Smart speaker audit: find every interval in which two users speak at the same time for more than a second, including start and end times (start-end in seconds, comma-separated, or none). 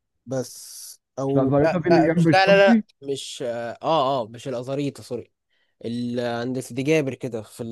1.3-2.9